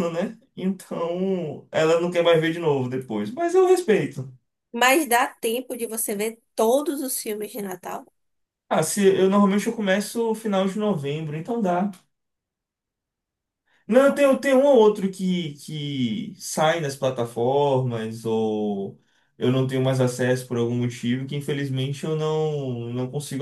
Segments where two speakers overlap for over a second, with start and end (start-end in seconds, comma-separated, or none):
none